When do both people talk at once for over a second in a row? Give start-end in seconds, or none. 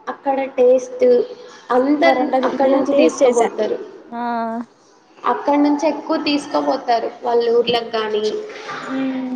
1.8-3.4